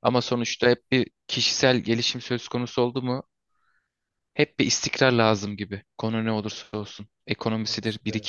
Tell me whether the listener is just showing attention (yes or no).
yes